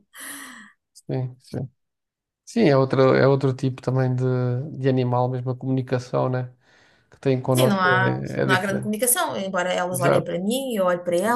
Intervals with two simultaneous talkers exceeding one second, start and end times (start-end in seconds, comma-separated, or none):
7.5-8.9